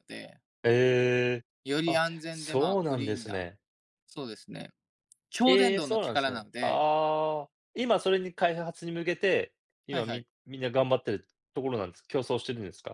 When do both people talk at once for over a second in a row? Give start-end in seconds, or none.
1.9-3.4, 5.5-6.8